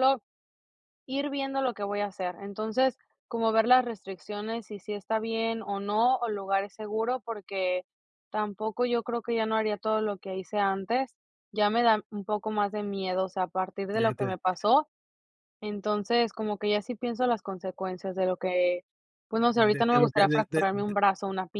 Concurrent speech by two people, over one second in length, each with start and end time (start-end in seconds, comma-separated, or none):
19.5-20.9